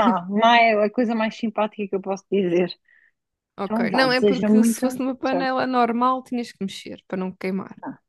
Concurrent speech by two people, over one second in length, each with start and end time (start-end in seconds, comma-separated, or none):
3.6-5.5